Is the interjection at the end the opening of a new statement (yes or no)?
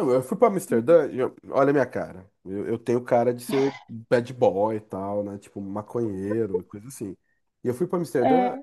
no